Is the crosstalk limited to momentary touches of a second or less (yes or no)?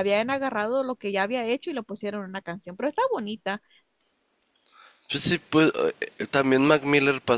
yes